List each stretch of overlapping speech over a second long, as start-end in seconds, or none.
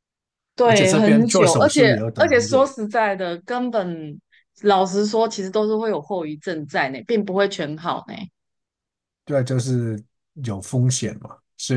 0.6-2.7